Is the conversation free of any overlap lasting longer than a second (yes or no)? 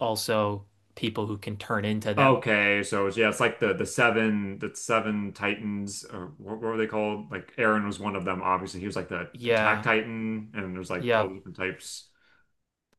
yes